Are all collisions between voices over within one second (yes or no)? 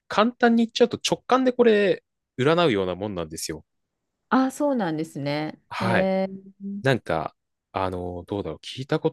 yes